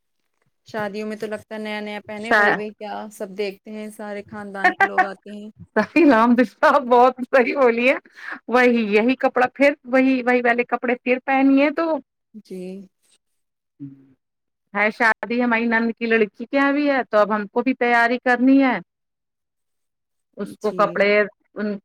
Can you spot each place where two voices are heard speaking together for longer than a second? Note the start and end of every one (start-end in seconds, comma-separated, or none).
none